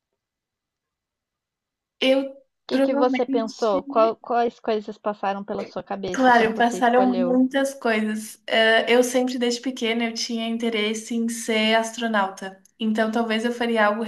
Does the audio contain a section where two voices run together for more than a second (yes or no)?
yes